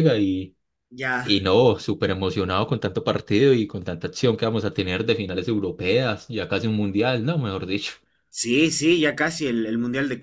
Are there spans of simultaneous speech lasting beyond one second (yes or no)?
no